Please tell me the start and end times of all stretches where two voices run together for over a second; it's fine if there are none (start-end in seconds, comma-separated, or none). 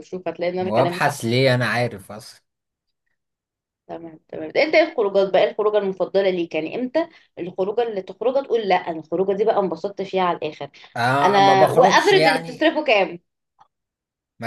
11.2-12.7